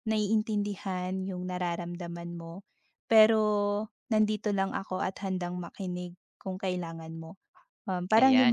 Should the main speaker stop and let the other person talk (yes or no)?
yes